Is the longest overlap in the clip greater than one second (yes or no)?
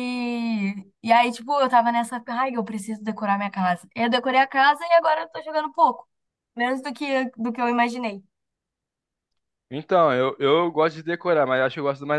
no